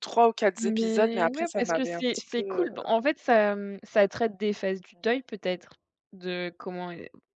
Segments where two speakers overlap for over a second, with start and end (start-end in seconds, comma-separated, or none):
0.6-2.7